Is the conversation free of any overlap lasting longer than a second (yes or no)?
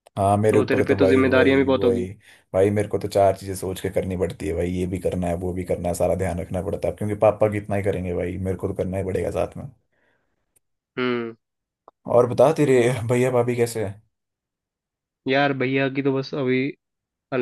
no